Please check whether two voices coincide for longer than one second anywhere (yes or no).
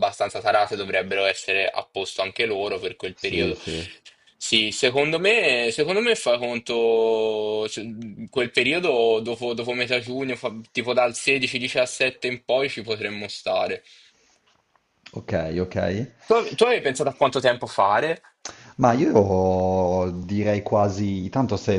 no